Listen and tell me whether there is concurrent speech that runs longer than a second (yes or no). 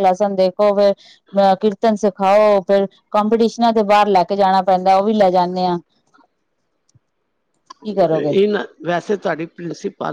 no